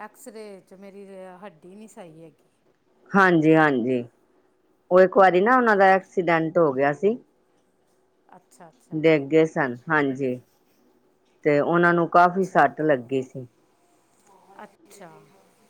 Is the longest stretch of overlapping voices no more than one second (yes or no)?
yes